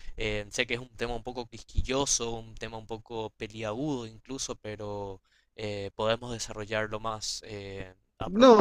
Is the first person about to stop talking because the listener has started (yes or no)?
yes